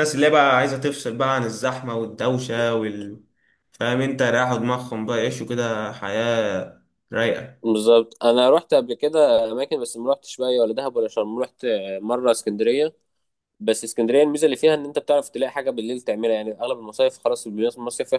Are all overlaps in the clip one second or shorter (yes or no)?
yes